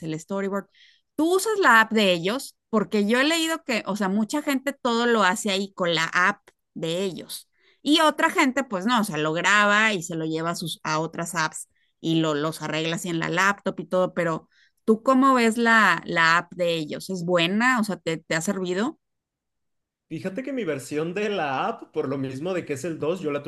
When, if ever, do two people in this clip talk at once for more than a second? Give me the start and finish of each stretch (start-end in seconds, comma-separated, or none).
none